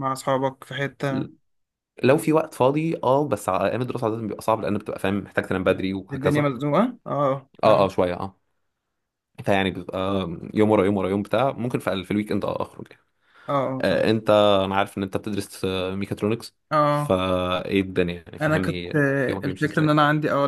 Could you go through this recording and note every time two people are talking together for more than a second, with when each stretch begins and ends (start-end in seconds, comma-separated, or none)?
18.4-19.9